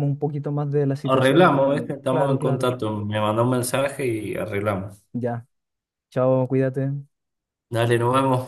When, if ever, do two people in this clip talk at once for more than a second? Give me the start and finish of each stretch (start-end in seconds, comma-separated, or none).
1.0-2.7